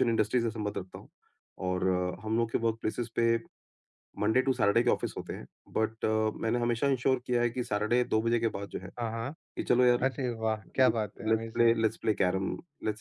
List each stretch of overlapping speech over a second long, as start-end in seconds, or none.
none